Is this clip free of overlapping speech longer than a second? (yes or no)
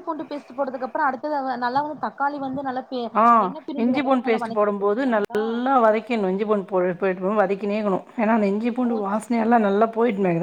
no